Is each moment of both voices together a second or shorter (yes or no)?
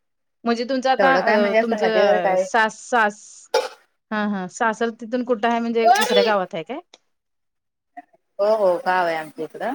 no